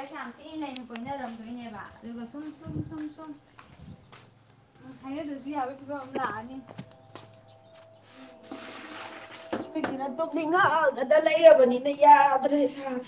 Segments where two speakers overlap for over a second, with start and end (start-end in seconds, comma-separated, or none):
none